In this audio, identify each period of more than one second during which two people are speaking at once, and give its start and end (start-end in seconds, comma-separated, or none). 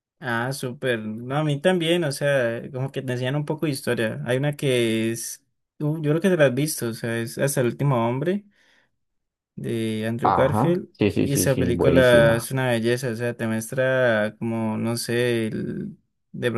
10.2-12.4